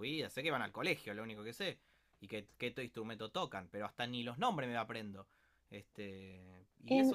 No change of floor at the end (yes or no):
yes